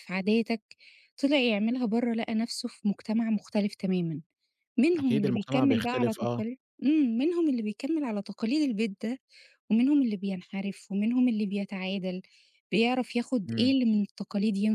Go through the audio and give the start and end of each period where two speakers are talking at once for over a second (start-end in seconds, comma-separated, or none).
5.0-6.4